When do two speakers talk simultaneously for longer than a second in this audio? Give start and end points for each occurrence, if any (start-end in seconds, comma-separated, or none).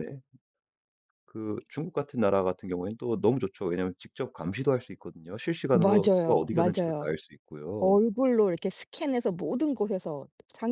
5.7-7.1